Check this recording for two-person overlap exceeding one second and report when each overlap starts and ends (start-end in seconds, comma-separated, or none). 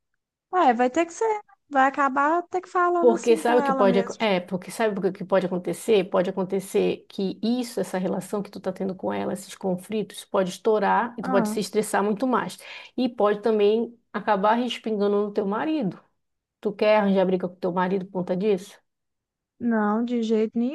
3.0-4.2